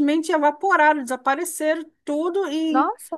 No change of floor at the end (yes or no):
yes